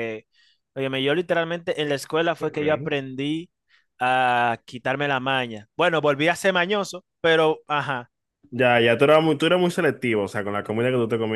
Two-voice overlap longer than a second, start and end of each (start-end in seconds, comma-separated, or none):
none